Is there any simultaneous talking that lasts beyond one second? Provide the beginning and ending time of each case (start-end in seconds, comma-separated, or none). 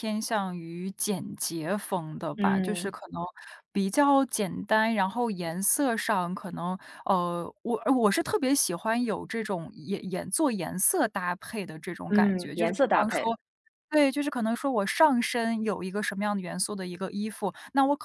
12.1-13.3